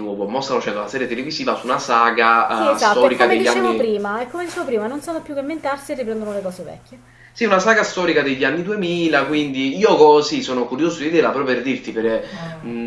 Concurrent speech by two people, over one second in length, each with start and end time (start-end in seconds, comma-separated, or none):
2.5-3.9